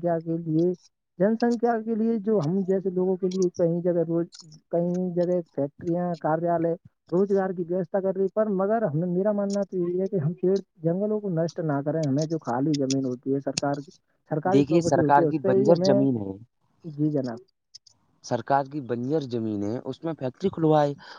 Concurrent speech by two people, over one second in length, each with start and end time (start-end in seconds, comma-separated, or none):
14.5-16.0